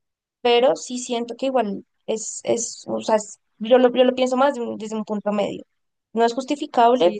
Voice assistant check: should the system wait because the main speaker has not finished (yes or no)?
yes